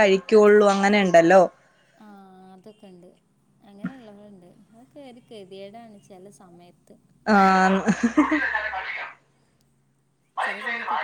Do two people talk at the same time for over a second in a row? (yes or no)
no